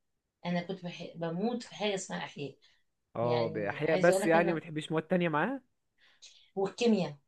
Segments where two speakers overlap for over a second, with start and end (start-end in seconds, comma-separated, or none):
3.2-4.6